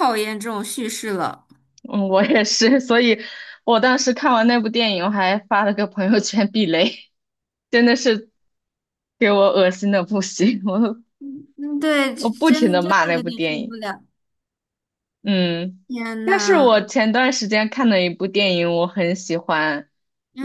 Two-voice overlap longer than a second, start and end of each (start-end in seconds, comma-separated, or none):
12.2-13.8